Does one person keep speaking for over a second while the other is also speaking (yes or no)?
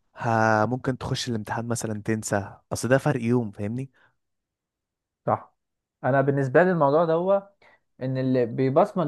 no